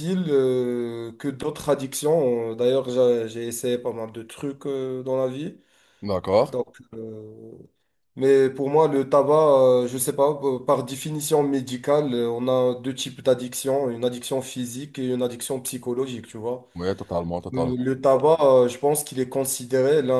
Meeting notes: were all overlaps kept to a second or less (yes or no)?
yes